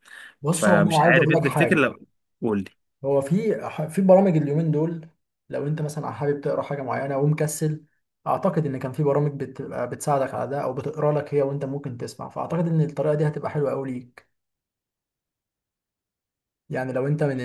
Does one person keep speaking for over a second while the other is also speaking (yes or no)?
yes